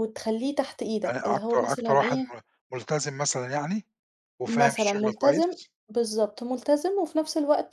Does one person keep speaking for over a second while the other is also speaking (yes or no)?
yes